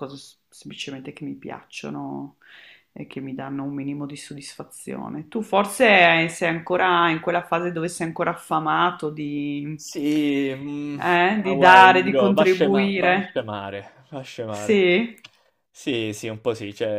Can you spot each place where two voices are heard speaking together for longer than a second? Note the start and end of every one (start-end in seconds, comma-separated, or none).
11.3-13.3